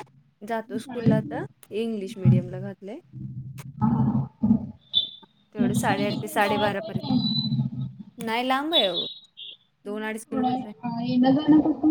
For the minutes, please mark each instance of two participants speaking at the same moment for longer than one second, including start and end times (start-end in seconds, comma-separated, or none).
5.5-7.4